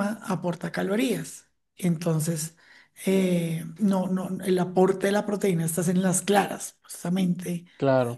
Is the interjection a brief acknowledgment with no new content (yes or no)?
yes